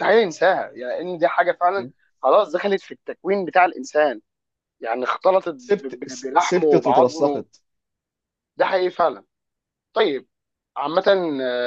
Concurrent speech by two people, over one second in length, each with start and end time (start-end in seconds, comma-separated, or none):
5.6-7.5